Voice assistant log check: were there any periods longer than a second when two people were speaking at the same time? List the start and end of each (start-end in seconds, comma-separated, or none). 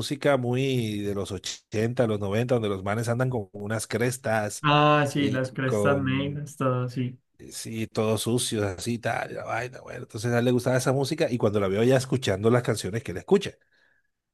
5.2-6.5